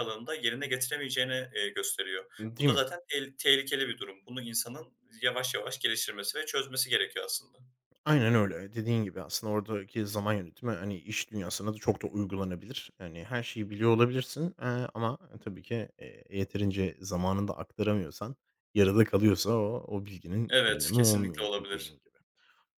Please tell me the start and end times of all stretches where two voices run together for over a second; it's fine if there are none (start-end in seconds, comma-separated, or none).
20.5-22.0